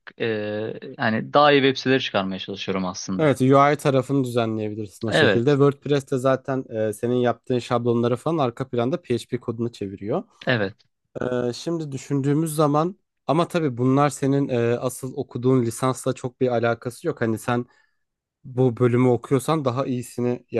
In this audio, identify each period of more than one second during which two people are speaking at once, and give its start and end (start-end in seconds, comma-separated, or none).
none